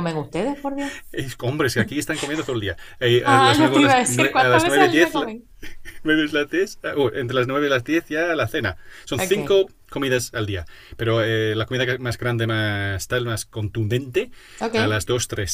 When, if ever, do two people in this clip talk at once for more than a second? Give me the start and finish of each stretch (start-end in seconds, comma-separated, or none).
3.2-5.3